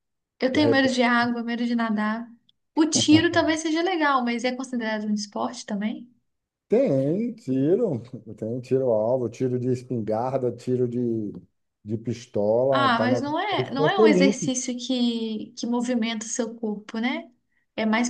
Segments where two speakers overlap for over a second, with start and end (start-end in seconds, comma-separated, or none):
12.7-14.5